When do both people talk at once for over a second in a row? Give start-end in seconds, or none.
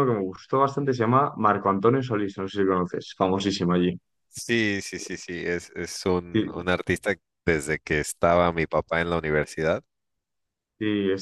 none